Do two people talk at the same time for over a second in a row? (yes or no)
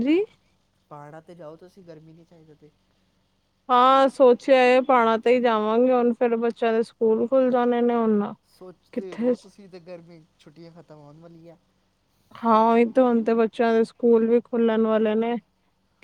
no